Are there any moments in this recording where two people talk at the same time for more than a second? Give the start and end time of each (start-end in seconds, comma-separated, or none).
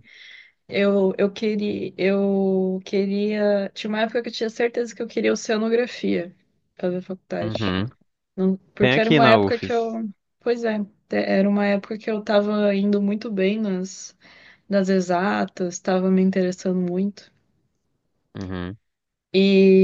8.8-10.0